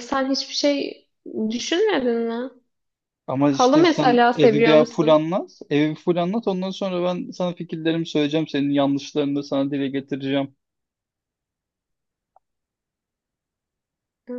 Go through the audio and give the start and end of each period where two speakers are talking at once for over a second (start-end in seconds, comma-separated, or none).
3.5-5.2